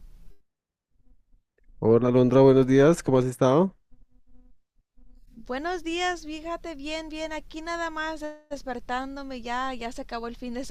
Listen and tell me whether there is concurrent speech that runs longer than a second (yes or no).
no